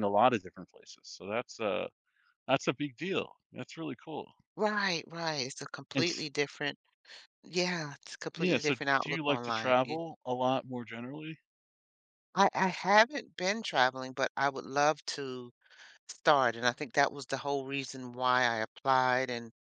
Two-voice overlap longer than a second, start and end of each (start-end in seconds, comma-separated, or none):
8.4-10.0